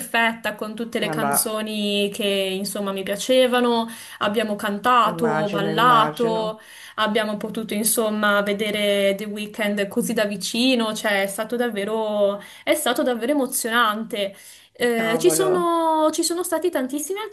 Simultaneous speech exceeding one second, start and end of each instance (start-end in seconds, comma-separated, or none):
5.0-6.6